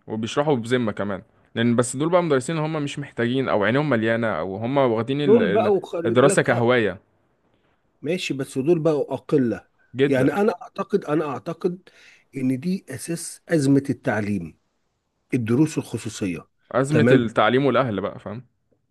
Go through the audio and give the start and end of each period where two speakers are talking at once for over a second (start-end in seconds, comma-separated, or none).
5.2-6.7